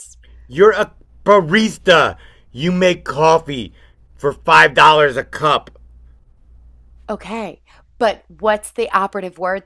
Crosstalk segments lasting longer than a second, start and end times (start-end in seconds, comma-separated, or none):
none